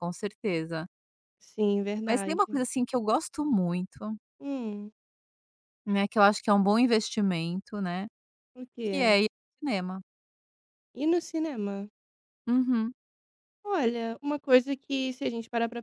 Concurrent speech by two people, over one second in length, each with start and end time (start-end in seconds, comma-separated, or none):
none